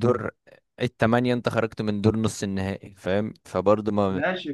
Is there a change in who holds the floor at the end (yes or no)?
yes